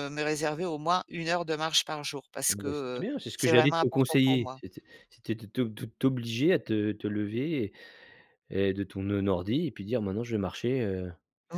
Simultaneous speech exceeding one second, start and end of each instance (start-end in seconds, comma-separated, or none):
2.5-4.6